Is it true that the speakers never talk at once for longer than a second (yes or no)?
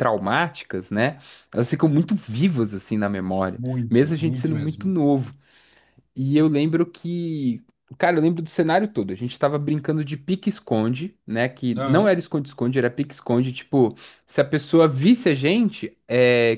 no